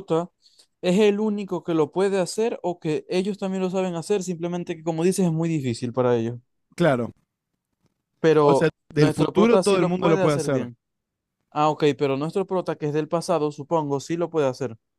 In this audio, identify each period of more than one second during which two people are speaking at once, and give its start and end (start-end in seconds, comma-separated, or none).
8.4-10.7